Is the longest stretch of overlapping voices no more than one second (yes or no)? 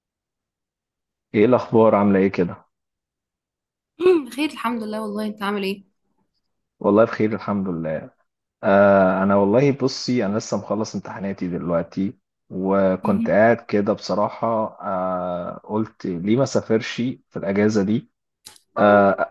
yes